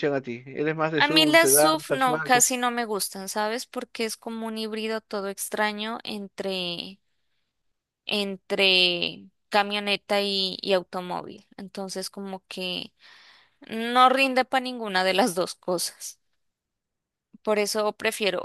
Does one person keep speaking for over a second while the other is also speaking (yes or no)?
yes